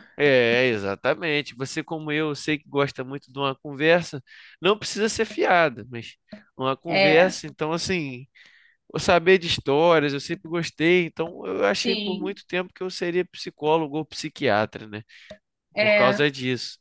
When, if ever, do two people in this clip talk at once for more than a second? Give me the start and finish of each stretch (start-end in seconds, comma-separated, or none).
none